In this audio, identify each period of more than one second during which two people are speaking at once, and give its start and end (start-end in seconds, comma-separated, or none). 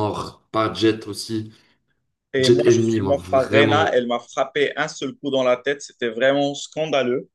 2.4-4.0